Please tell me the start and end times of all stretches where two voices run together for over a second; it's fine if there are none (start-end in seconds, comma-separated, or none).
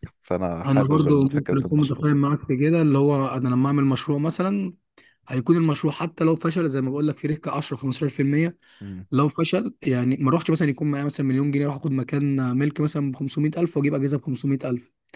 0.6-2.1